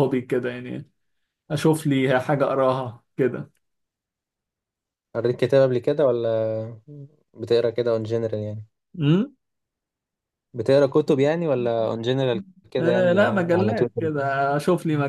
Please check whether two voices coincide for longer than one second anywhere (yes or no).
yes